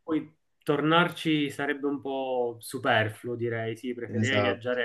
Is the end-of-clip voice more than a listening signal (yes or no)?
no